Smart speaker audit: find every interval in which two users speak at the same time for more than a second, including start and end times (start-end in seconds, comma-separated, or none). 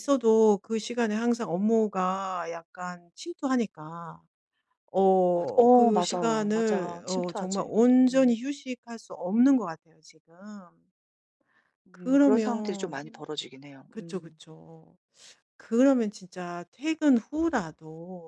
5.3-8.4, 11.9-13.2